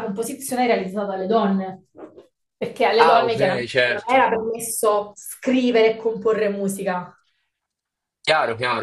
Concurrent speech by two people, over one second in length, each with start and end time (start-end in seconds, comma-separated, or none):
3.0-4.2